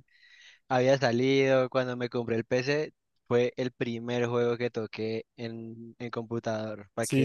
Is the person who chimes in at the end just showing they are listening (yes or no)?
no